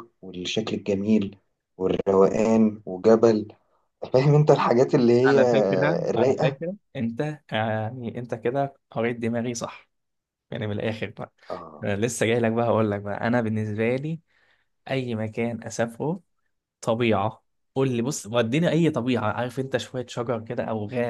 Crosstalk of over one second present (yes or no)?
no